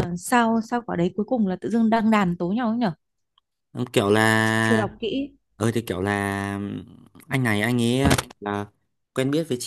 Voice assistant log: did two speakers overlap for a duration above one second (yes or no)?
no